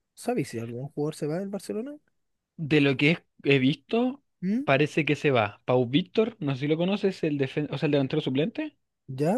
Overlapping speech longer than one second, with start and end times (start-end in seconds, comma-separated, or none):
none